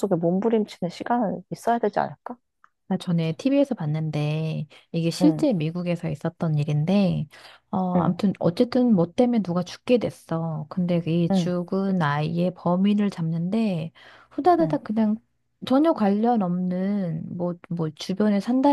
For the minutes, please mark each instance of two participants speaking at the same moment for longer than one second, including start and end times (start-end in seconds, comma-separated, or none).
none